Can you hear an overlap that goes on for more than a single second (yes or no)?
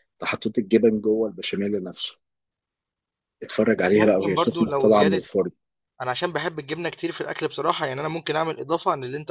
yes